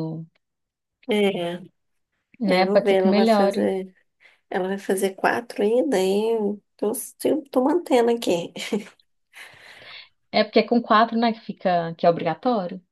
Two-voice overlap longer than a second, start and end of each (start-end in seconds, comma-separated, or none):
2.5-3.7